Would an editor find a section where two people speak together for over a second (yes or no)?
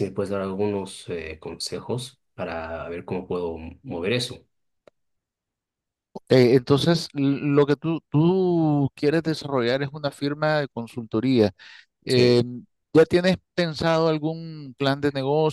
no